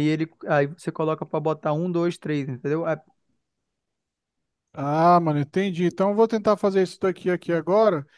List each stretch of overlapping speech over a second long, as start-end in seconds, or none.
none